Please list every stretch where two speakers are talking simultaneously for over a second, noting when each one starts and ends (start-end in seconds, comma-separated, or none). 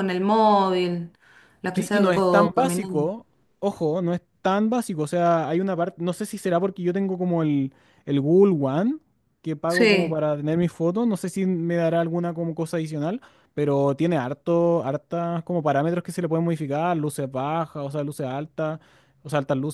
1.7-3.1